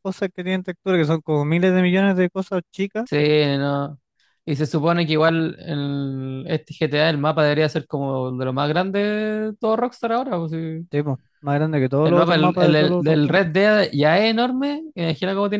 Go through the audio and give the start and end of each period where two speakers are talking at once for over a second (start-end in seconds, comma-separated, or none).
12.0-13.4